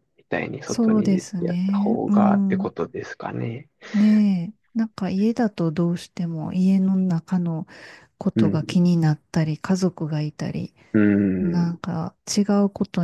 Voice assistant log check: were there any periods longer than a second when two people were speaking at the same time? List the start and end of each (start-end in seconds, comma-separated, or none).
0.6-2.7